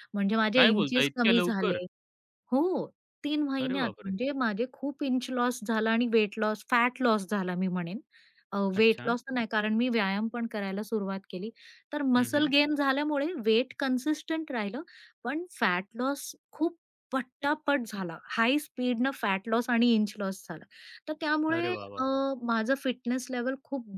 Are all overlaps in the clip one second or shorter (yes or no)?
no